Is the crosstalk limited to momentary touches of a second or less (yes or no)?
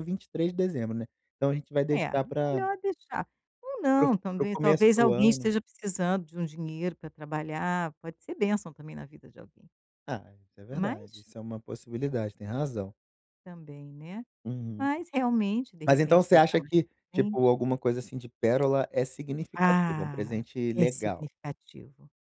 no